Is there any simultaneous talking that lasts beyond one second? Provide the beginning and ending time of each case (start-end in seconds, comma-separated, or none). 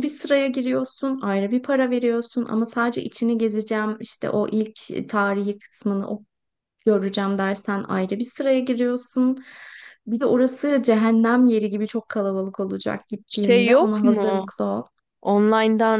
13.3-14.5